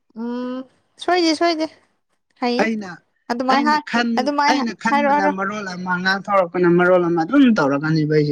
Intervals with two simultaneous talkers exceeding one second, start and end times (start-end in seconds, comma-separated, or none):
none